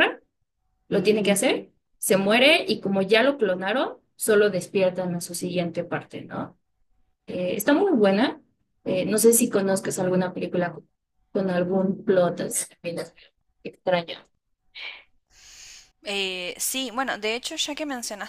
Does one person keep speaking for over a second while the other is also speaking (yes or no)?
no